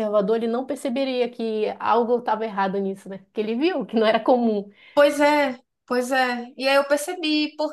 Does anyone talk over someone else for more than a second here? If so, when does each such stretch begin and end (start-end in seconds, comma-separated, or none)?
none